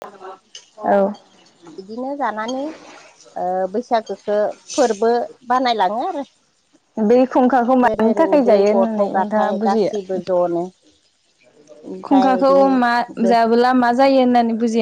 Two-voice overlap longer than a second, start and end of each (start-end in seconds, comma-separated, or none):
7.9-10.2